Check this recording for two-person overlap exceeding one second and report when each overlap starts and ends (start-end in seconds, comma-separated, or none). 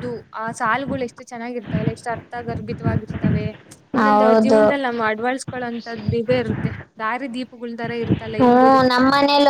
none